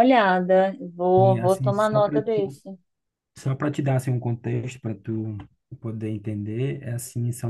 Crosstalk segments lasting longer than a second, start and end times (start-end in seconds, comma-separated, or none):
1.1-2.6